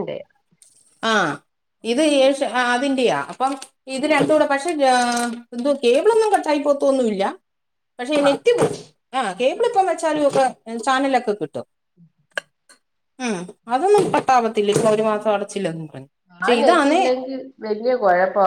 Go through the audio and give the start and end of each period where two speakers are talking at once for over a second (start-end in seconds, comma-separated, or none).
none